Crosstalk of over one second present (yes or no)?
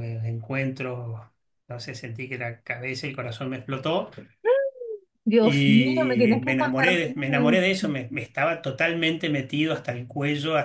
yes